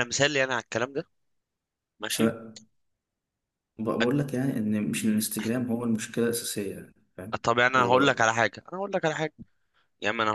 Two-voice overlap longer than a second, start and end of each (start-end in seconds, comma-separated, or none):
none